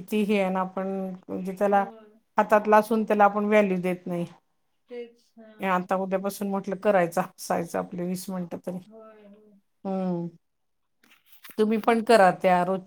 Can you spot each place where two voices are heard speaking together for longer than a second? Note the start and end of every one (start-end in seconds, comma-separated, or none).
none